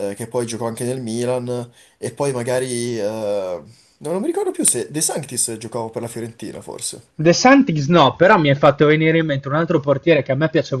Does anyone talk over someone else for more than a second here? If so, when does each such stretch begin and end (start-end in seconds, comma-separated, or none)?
none